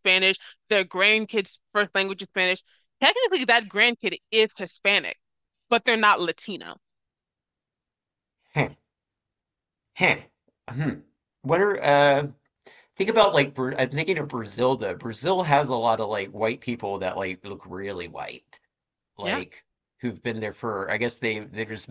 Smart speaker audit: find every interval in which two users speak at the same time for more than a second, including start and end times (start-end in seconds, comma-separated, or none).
none